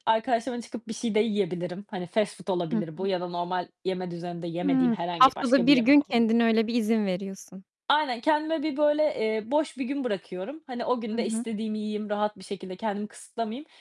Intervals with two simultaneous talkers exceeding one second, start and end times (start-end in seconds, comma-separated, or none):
4.6-6.3